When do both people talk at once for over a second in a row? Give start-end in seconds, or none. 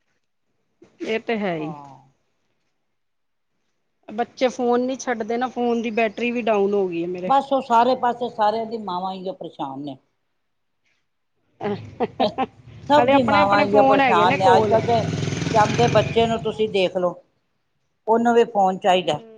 13.0-14.7